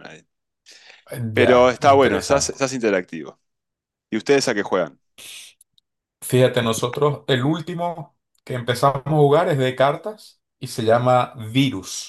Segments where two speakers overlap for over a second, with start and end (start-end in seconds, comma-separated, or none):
1.4-2.6